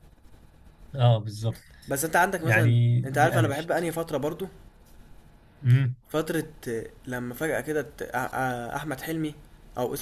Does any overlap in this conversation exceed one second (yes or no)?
yes